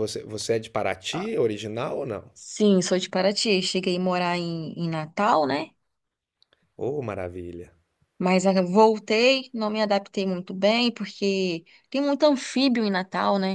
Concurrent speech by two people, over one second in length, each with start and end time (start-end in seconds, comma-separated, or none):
none